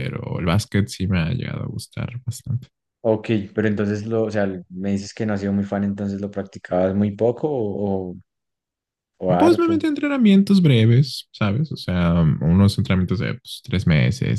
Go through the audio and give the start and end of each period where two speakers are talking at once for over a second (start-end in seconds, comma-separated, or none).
none